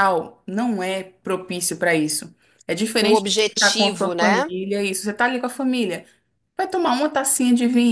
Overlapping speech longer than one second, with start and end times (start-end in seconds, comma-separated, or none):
3.0-4.5